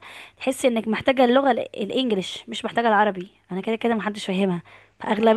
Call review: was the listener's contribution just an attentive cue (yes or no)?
yes